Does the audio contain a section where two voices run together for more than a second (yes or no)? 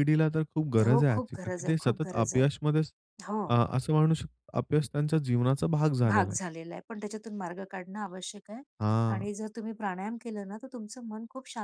yes